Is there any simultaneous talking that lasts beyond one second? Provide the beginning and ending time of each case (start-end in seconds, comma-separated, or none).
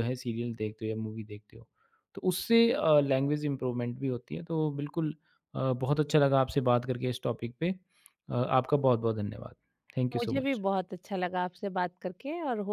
none